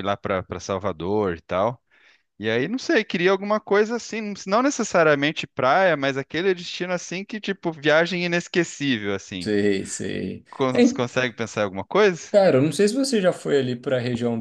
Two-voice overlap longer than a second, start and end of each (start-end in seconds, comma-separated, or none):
none